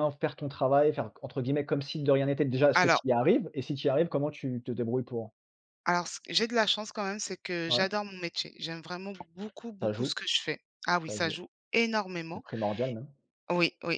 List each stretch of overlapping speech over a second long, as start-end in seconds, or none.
none